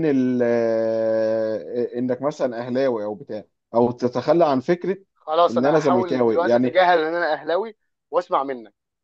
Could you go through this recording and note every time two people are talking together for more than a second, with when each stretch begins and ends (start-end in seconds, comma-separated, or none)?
5.5-6.8